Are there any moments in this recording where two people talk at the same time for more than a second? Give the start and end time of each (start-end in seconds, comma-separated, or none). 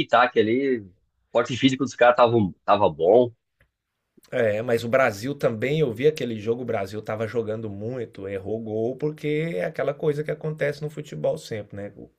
none